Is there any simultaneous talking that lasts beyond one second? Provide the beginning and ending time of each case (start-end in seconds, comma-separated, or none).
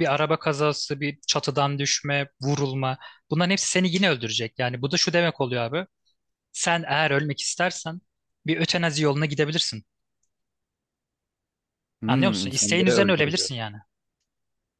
12.1-13.5